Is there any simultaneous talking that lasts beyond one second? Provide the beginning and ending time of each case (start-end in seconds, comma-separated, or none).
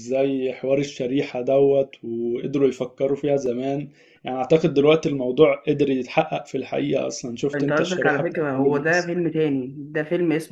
7.5-9.0